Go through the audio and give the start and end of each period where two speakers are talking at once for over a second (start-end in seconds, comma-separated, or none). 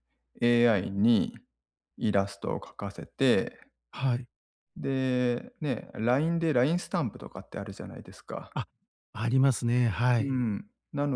none